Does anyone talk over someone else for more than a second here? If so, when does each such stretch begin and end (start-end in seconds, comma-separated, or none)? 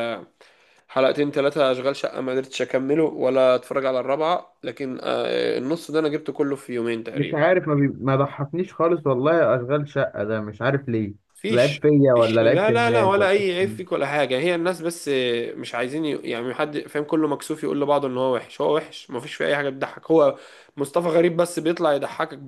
11.5-13.8